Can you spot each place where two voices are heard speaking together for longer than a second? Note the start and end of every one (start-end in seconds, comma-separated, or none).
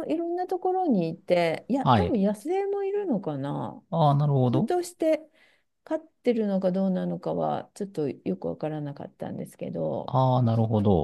none